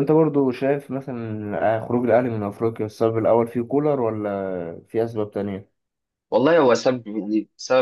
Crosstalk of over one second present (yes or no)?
no